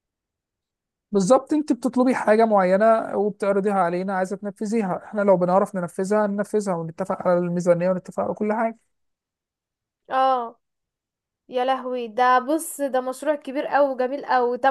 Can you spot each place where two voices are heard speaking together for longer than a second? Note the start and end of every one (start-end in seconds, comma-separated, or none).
none